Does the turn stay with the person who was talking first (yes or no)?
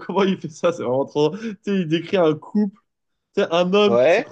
yes